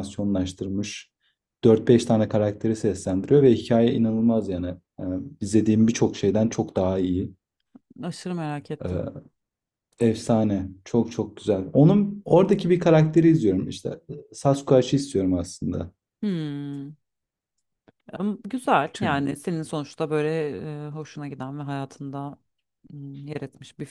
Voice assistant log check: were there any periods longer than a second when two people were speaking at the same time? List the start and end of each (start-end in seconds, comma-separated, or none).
none